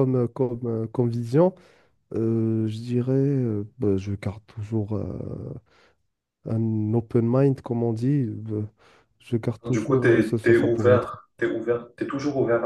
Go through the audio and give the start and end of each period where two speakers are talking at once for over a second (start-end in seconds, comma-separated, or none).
9.7-11.1